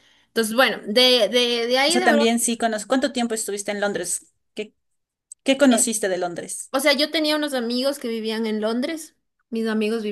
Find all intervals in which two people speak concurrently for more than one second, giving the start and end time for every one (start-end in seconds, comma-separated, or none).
none